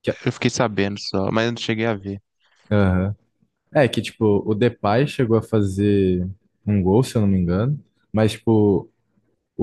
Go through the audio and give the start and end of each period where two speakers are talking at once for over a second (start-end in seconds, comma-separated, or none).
none